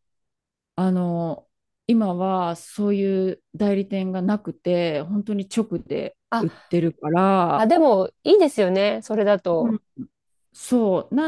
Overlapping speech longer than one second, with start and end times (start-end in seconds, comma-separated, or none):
none